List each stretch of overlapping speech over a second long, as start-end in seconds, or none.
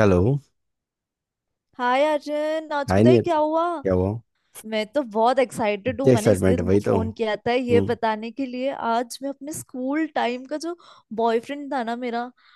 5.9-8.0